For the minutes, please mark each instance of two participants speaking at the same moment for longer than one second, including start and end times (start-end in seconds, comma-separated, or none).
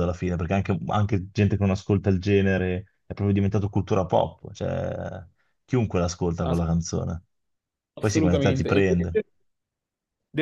8.0-9.2